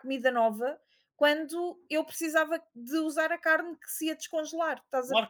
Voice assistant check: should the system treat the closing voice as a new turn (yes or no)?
yes